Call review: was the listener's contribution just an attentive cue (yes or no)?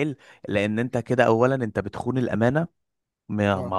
yes